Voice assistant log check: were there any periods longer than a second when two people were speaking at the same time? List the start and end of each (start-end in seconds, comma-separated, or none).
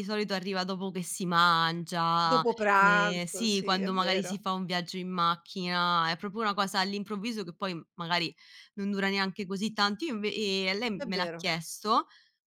2.3-4.4